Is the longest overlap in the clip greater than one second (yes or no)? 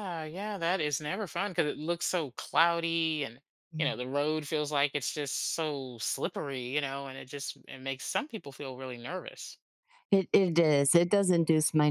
no